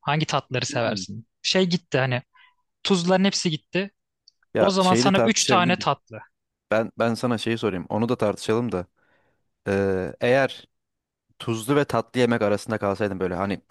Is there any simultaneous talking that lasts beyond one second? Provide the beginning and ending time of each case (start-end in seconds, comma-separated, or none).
4.6-5.9